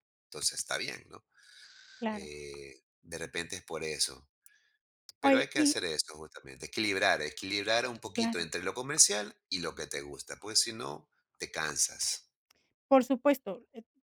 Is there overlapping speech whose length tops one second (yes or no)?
no